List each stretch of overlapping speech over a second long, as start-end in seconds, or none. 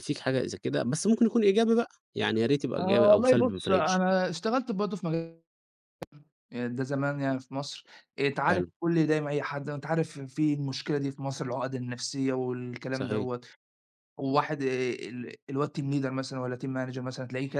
2.8-4.0